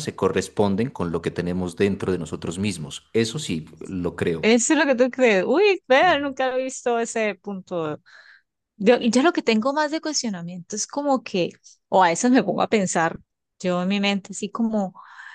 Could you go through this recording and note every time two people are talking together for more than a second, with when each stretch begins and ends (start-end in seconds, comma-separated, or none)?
none